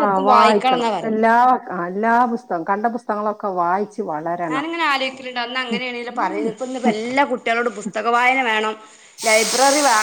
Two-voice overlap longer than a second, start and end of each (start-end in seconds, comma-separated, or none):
none